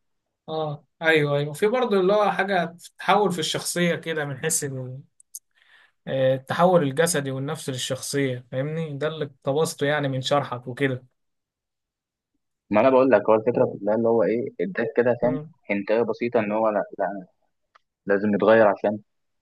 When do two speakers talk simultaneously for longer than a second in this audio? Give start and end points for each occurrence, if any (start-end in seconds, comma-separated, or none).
none